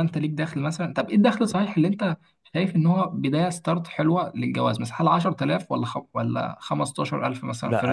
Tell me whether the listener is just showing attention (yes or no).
no